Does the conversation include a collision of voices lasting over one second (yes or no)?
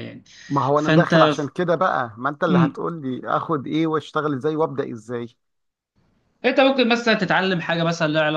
no